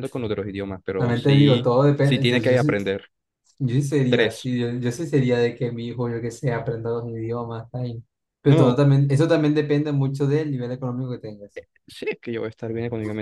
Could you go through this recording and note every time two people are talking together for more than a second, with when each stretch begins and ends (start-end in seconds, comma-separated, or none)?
0.9-2.8